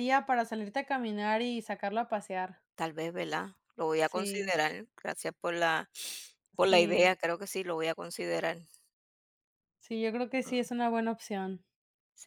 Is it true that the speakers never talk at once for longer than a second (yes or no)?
yes